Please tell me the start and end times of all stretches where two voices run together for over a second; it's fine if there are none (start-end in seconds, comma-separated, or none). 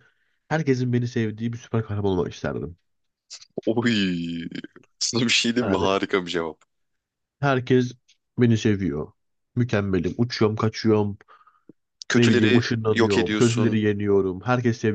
12.1-13.8